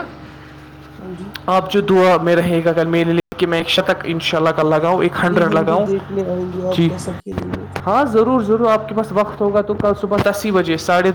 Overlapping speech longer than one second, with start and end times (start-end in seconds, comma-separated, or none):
none